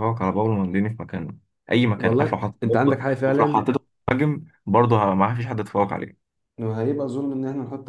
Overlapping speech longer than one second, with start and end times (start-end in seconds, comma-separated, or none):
2.0-3.7